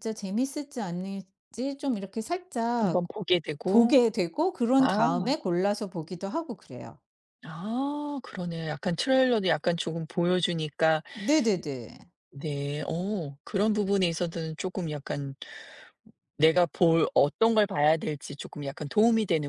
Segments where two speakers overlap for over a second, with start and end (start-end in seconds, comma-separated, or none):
none